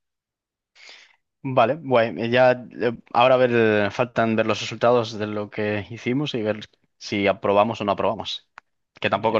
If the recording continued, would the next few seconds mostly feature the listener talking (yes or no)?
no